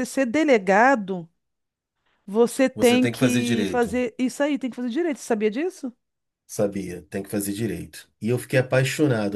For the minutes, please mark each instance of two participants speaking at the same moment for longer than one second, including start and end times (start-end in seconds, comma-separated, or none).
2.7-3.9